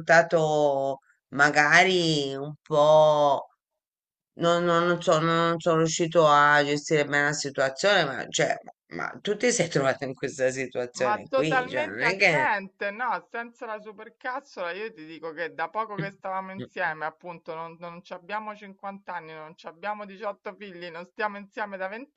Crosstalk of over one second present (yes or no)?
yes